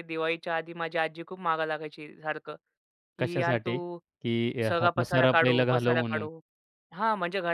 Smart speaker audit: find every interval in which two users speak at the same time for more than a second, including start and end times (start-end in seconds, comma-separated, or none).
4.7-6.3